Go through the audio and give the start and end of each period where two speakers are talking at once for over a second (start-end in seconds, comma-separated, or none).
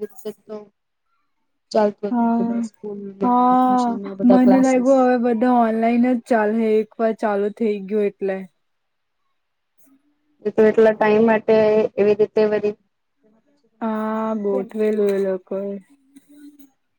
3.2-4.9